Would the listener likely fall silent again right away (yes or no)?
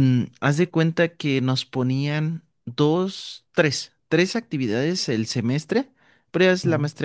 yes